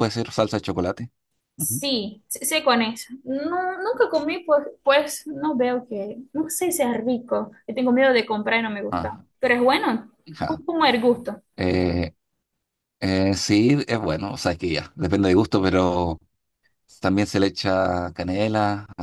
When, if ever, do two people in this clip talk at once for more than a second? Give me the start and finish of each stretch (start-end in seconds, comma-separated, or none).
none